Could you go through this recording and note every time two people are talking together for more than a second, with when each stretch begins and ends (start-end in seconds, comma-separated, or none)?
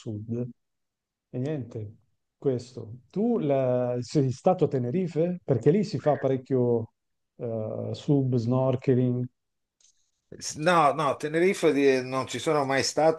none